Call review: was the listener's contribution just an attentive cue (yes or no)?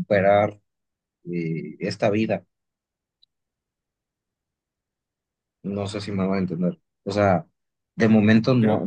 yes